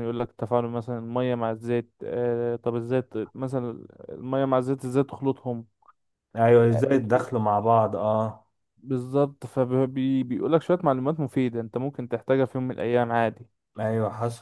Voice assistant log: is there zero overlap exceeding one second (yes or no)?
yes